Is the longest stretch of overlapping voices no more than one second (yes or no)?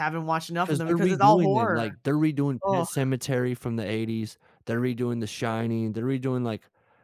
no